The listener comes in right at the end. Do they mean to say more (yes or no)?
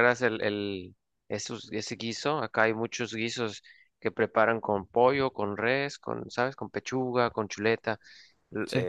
no